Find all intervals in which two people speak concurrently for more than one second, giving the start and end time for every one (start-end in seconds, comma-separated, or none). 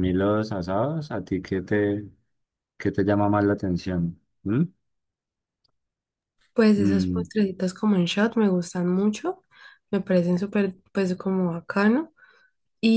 none